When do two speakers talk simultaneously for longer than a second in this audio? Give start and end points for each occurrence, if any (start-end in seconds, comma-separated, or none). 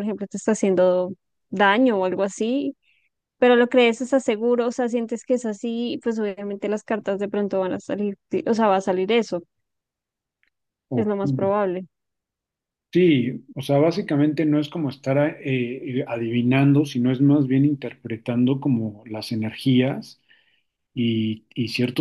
none